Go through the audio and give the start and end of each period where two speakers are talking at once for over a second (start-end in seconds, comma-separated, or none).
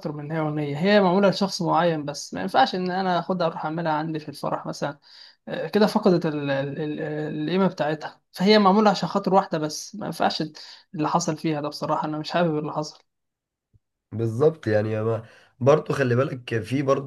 none